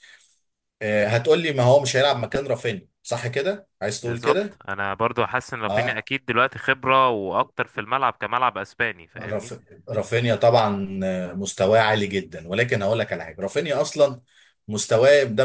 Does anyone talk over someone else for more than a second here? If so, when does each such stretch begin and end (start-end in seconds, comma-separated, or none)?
none